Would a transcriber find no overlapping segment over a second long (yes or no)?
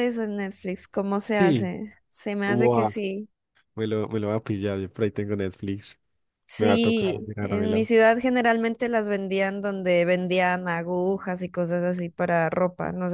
no